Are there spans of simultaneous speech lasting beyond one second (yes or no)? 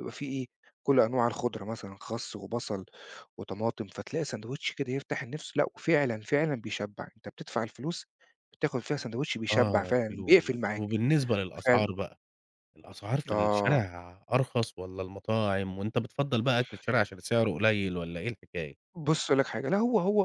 yes